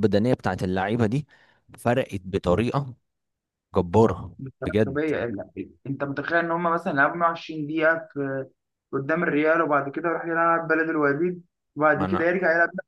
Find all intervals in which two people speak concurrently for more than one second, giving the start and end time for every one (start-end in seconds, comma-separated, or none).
none